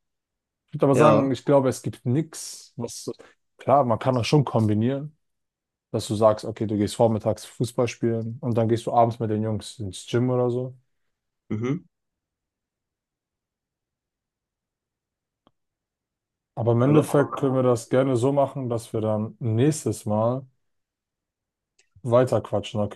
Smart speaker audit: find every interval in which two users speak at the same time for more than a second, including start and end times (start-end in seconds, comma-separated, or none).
16.9-18.1